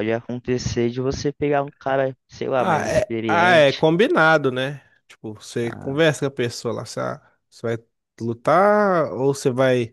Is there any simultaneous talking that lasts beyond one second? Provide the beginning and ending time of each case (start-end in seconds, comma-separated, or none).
2.6-3.9